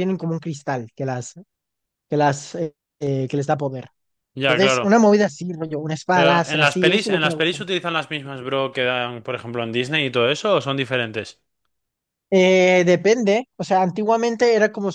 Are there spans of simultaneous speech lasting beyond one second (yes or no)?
yes